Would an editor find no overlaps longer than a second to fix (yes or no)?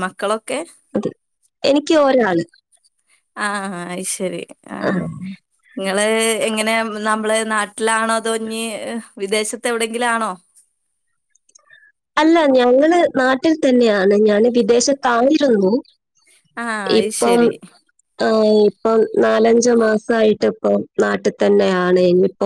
yes